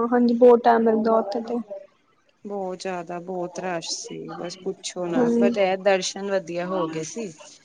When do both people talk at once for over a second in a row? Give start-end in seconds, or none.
none